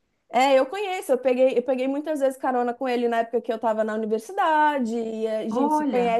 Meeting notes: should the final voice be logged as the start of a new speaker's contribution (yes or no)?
no